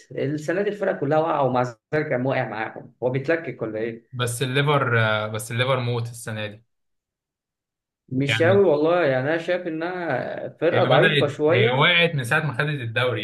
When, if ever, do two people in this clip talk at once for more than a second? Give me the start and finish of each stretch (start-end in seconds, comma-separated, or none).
10.7-12.0